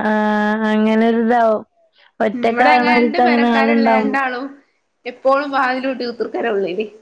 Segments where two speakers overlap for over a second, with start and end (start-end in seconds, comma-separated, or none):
2.3-4.1